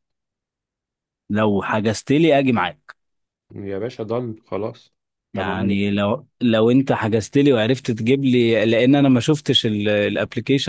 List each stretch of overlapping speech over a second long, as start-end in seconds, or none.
none